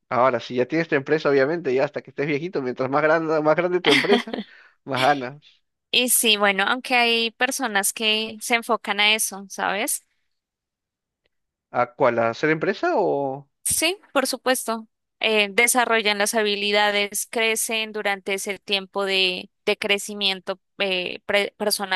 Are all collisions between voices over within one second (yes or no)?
yes